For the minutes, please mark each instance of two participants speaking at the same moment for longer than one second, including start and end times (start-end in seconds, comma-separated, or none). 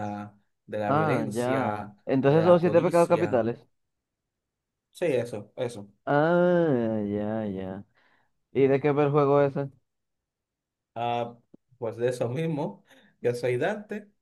0.9-3.5